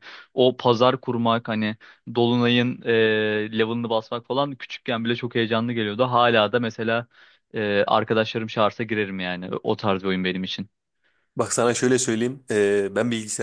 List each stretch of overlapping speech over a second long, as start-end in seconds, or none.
none